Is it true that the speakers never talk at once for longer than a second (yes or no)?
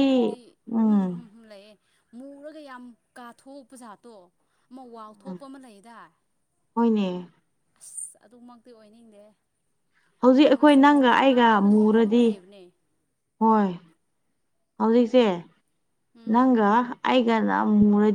no